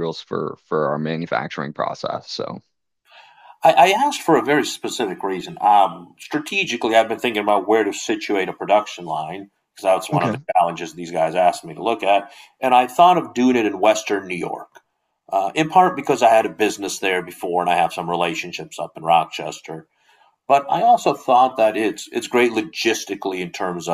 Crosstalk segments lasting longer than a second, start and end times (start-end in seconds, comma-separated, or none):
none